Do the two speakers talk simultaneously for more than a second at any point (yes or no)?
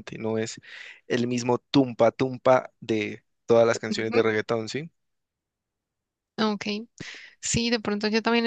no